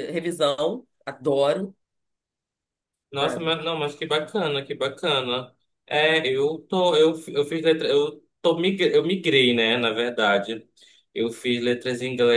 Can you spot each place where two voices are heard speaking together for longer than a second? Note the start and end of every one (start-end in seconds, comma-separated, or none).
none